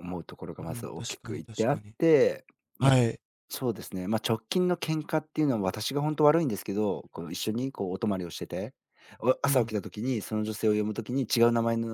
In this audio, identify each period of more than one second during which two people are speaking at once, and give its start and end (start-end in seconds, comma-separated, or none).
0.6-1.9